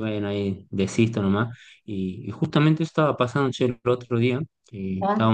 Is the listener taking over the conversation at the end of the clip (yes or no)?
no